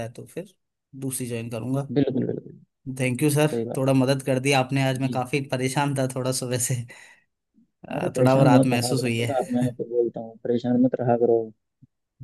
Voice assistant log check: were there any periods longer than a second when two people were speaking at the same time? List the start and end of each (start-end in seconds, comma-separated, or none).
7.9-9.3